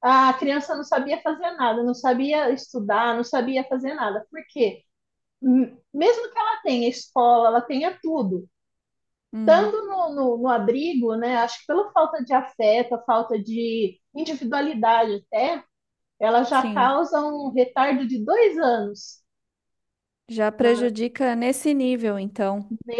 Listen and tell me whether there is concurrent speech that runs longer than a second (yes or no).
no